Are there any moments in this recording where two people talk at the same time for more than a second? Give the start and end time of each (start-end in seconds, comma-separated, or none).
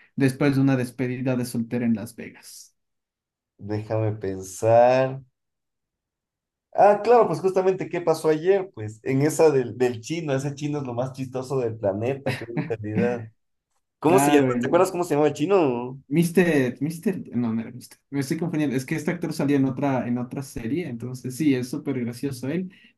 none